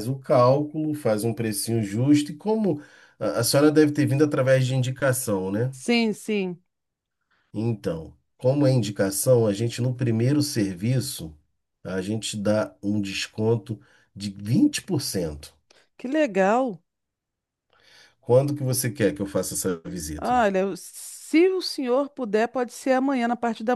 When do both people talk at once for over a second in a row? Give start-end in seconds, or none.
none